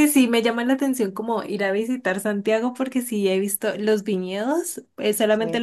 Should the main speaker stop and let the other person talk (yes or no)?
no